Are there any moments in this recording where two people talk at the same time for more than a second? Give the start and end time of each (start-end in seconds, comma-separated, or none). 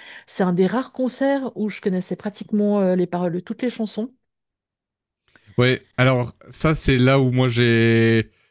none